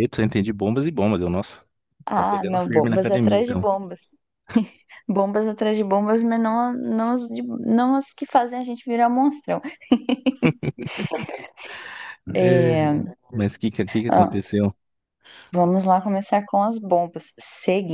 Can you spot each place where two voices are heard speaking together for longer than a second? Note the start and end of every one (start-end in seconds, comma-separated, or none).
2.1-3.7